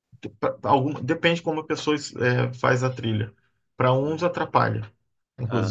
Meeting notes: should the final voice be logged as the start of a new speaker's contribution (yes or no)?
no